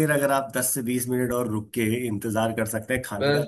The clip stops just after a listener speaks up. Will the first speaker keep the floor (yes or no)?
yes